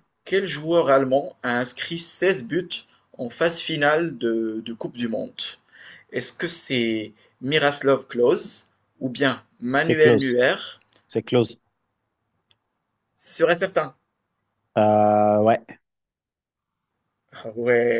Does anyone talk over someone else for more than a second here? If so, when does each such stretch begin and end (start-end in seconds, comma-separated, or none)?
none